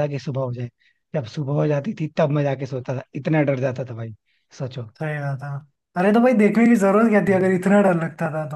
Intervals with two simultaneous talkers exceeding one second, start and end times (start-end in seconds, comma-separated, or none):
none